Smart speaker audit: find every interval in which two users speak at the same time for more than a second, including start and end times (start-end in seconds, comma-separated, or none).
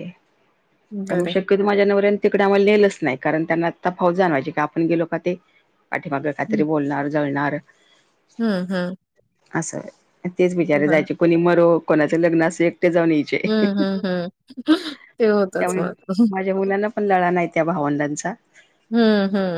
none